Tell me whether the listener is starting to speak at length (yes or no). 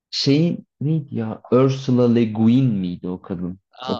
yes